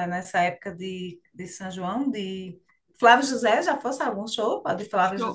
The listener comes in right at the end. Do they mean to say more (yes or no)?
yes